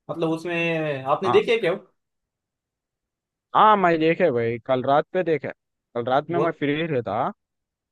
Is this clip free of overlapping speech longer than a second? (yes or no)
yes